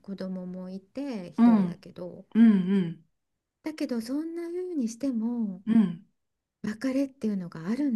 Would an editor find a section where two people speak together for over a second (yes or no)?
no